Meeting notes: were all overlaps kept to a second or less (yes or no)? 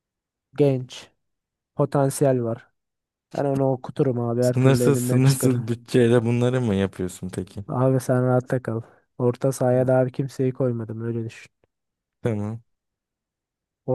no